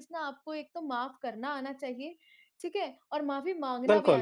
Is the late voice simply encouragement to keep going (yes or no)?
yes